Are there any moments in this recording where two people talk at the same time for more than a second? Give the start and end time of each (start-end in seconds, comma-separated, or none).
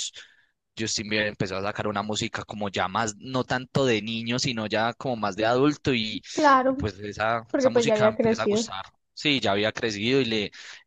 7.5-8.7